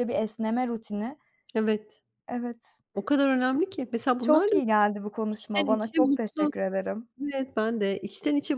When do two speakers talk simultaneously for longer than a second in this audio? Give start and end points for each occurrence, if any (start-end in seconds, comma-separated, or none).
5.3-6.5